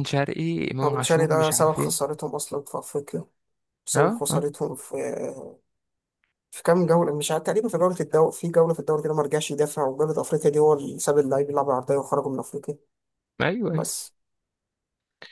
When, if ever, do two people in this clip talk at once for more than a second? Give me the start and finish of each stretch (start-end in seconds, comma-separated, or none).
0.8-2.1